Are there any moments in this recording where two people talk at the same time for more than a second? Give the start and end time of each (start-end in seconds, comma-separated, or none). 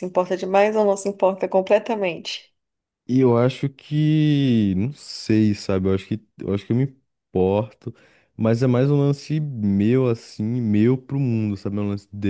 none